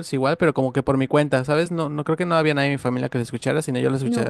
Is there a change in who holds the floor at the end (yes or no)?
yes